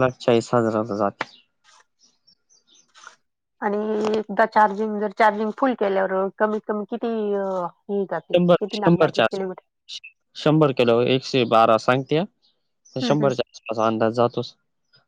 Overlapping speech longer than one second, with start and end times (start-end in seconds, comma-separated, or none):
8.3-9.7